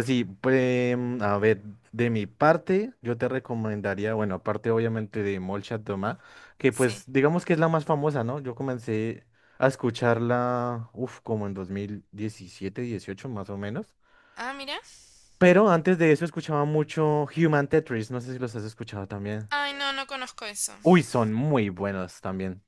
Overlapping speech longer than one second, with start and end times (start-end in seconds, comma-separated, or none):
none